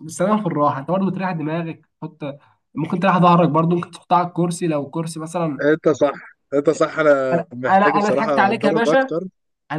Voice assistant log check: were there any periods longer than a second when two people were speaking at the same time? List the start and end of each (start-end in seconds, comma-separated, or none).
7.3-9.1